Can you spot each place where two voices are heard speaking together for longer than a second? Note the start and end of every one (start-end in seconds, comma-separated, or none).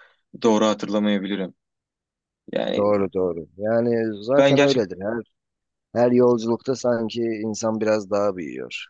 none